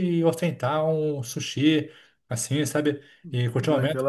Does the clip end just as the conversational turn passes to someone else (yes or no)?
no